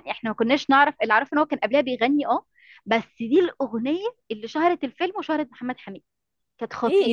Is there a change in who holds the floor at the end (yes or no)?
yes